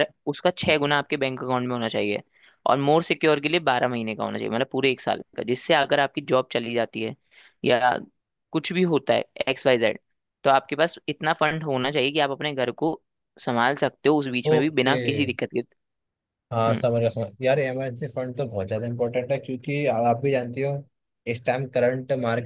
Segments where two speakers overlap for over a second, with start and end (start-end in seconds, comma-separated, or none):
none